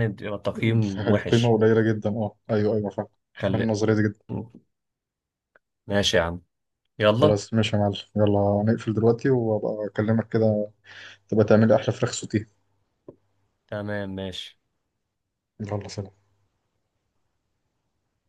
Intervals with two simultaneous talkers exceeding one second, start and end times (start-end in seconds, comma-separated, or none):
none